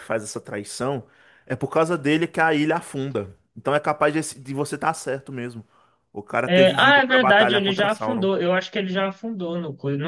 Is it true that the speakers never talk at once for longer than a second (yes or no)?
no